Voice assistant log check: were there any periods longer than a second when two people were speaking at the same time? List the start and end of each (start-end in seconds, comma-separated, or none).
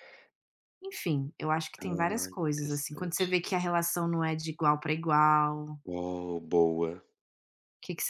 1.8-3.3